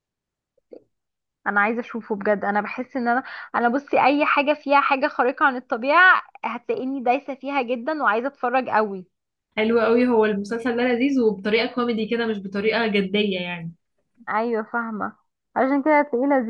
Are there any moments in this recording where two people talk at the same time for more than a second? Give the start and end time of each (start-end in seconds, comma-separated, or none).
none